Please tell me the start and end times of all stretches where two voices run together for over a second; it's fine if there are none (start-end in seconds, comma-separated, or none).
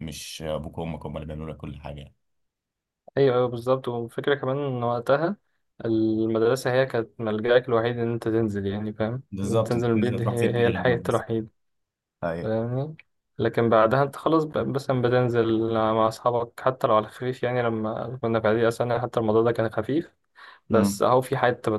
9.3-11.2